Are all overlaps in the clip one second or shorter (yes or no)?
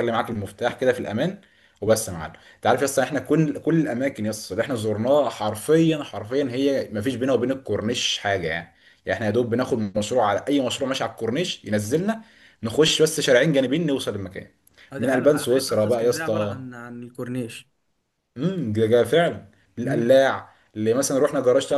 no